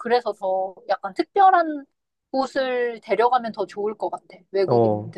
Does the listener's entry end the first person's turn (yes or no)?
yes